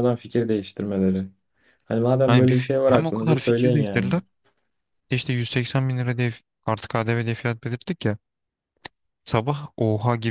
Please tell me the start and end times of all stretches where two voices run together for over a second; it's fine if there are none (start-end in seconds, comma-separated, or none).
2.2-4.2